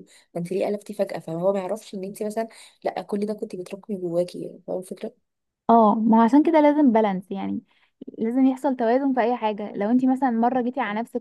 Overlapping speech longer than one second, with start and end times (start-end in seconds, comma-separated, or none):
none